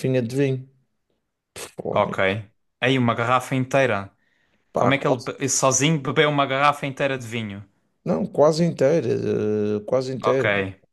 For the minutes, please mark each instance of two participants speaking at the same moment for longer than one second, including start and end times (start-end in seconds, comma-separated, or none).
none